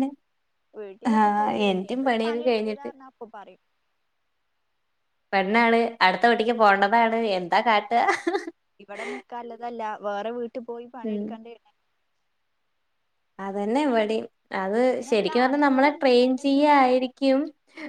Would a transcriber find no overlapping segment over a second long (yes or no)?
no